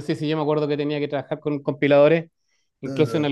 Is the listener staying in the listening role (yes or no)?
yes